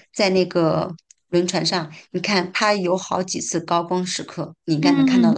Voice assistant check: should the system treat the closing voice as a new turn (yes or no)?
yes